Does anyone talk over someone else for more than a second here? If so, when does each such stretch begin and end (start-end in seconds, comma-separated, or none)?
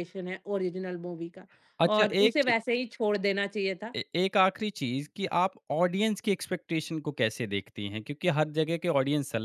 none